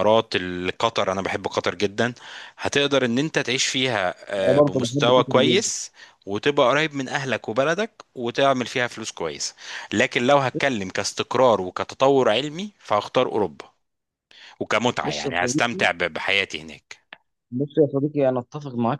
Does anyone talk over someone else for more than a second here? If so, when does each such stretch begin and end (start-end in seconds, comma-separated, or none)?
4.4-5.6